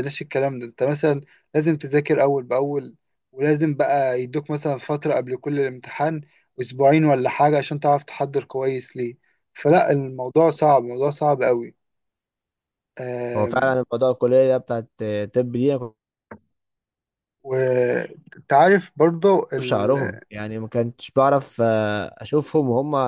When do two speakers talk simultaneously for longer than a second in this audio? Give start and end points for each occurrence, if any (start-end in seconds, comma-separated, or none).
none